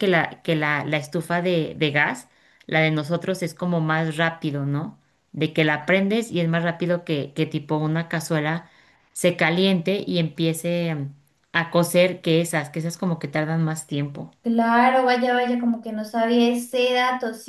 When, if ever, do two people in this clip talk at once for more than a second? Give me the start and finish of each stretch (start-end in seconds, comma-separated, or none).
none